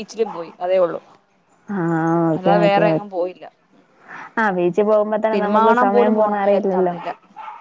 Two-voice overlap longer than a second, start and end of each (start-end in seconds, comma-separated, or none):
5.3-6.9